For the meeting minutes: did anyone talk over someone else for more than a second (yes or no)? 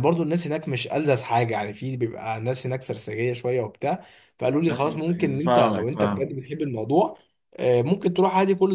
yes